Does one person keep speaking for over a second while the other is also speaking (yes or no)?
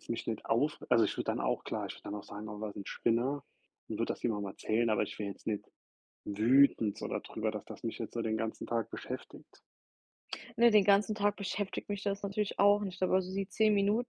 no